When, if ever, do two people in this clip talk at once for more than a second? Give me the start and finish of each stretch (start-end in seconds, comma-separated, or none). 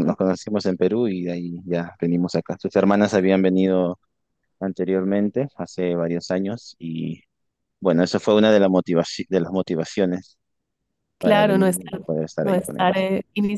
11.2-13.1